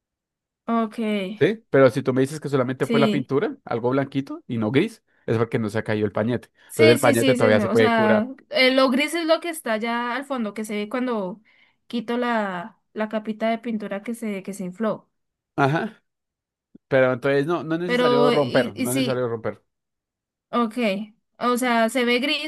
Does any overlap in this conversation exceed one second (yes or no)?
yes